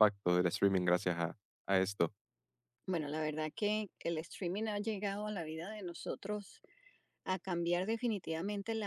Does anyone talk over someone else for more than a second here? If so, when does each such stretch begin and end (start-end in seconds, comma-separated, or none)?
none